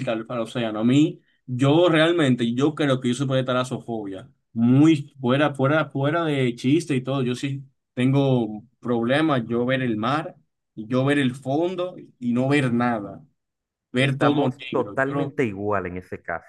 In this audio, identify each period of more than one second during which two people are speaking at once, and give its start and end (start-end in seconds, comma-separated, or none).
14.0-15.4